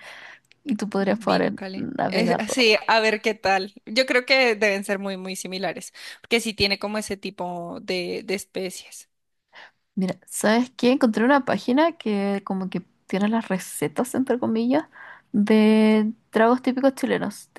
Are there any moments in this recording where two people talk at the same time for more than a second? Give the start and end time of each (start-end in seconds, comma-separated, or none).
1.0-2.6